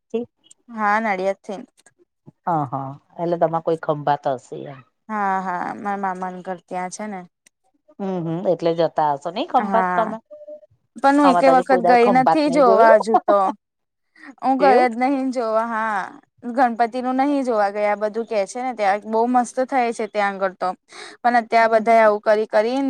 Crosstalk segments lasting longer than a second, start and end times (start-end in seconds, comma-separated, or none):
11.2-13.0